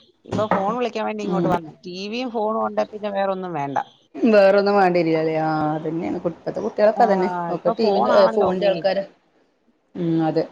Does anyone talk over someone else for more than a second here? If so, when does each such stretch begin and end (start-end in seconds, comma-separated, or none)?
7.0-8.8